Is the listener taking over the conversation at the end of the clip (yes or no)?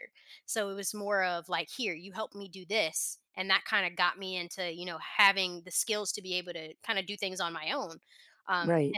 no